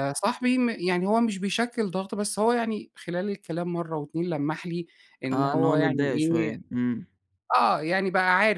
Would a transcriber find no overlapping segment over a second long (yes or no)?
no